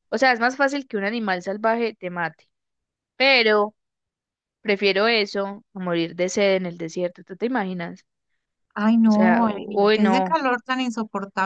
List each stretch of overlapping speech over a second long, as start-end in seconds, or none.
9.0-10.4